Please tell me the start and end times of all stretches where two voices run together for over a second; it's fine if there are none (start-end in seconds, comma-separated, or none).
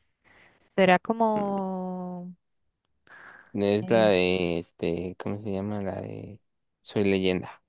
none